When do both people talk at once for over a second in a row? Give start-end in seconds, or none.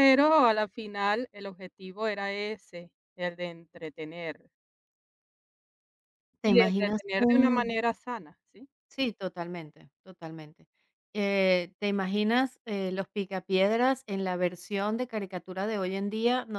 6.4-7.7